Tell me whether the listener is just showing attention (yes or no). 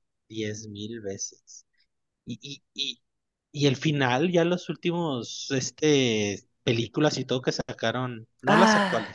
yes